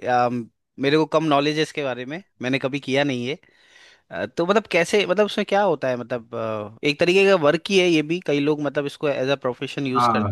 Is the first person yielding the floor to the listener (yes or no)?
yes